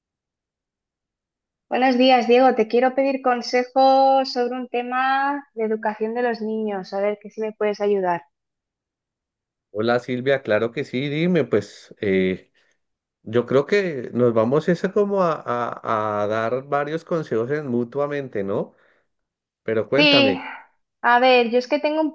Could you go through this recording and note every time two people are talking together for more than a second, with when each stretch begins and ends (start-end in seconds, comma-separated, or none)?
none